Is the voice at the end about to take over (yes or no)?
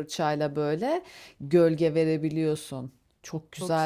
no